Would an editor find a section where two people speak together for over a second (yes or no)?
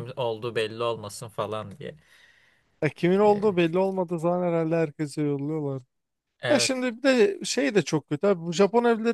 no